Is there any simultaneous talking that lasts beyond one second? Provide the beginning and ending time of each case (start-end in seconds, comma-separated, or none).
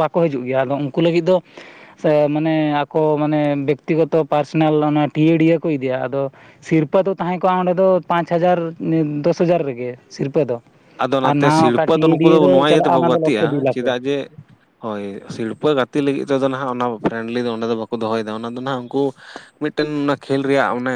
11.3-13.9